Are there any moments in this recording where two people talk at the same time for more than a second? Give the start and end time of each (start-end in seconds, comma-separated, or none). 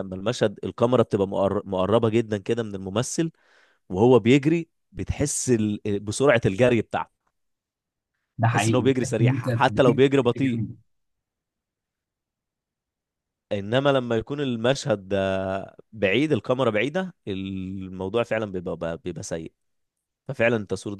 8.5-10.6